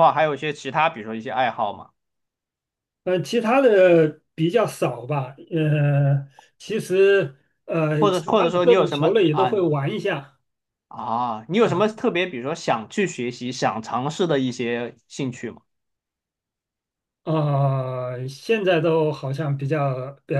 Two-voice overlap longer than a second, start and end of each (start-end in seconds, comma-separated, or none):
8.0-9.6